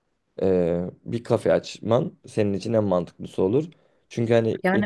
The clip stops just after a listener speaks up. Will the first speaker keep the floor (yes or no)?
yes